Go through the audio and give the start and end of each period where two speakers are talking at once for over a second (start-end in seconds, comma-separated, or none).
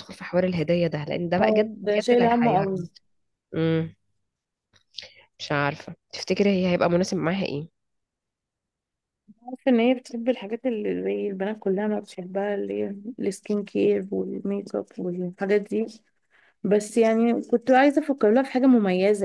1.4-2.9